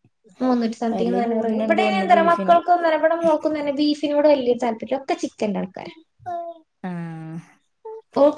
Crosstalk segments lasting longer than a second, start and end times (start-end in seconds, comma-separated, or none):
0.9-2.6